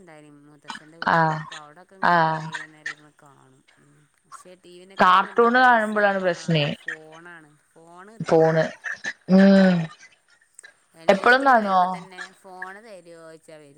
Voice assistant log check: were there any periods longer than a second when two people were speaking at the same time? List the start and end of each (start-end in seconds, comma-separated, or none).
5.0-6.6